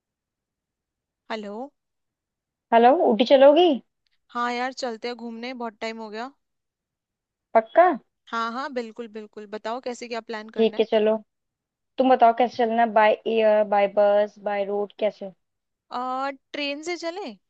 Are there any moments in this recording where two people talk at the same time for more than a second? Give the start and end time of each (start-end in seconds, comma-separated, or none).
none